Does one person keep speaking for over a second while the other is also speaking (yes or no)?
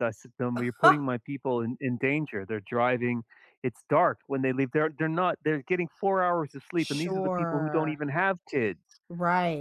yes